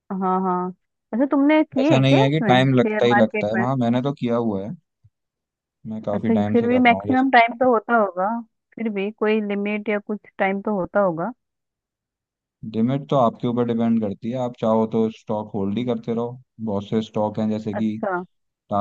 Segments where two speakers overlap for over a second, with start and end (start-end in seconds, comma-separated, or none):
1.8-3.6, 6.1-7.5